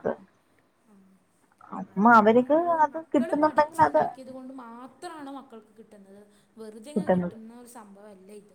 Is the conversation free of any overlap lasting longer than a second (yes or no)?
no